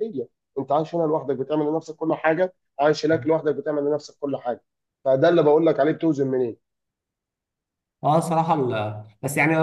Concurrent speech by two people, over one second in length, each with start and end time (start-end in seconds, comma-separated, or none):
none